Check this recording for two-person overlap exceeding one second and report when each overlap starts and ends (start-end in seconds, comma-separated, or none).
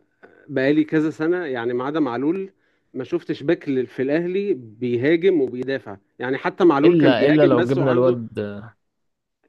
6.8-8.2